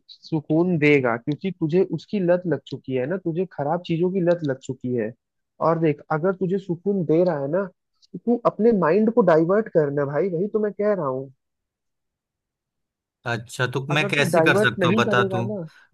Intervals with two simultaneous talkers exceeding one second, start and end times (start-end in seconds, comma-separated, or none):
13.9-15.4